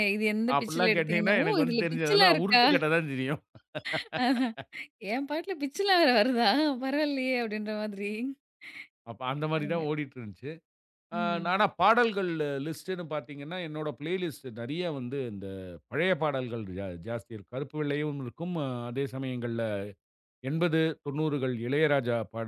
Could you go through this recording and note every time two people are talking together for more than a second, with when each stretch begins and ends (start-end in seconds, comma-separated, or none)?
0.6-2.6